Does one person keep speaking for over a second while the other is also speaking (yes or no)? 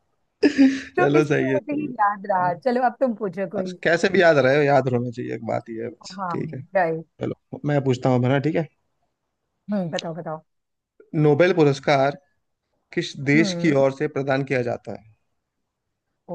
yes